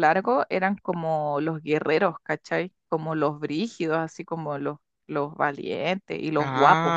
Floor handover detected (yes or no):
yes